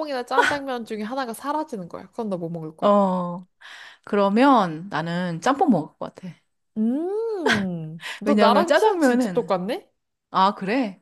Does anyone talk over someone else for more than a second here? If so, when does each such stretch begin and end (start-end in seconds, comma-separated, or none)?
8.2-9.6